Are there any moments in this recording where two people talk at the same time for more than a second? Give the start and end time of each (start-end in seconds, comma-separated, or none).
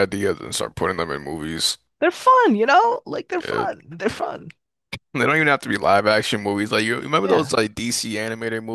none